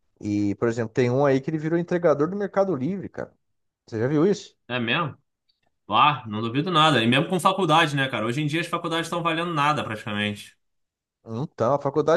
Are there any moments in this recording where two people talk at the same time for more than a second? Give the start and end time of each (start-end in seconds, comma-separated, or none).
none